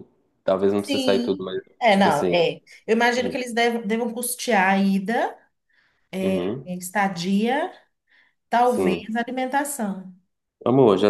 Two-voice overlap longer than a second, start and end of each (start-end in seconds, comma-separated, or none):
0.8-2.4